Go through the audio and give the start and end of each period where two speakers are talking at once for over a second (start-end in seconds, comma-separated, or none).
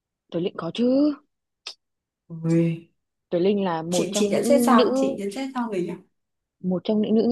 3.9-5.2